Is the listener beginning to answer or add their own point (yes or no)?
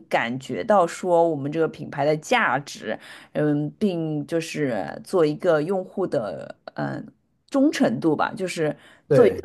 no